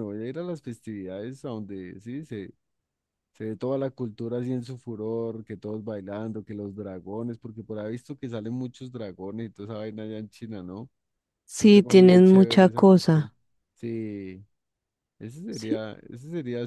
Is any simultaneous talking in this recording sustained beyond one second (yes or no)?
yes